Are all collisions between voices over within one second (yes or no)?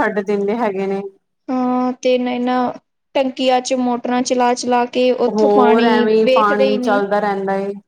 no